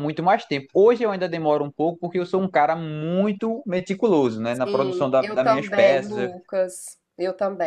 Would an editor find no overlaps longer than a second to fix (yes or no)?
no